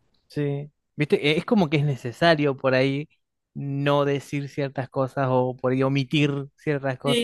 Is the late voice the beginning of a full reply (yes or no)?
yes